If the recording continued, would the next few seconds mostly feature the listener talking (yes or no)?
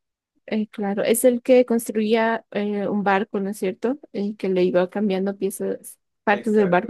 yes